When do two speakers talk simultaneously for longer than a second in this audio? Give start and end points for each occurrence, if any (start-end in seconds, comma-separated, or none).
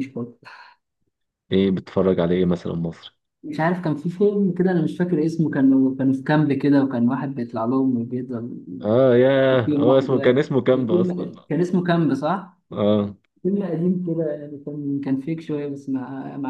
9.6-11.3